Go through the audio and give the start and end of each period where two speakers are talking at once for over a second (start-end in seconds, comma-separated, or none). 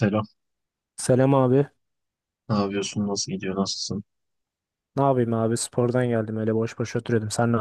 none